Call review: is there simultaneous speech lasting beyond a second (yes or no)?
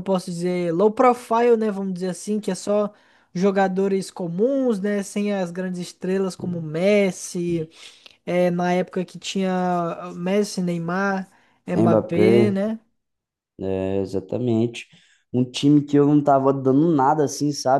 no